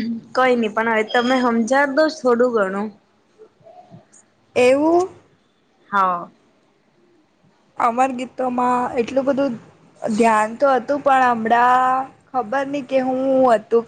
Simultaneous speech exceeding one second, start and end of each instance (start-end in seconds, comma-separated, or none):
none